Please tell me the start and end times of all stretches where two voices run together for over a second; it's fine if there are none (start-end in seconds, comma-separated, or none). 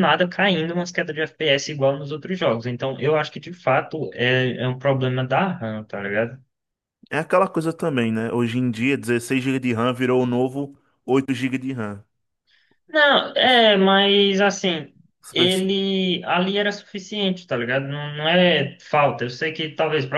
none